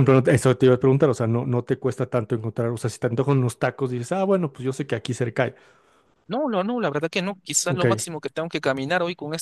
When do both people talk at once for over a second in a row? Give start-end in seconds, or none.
none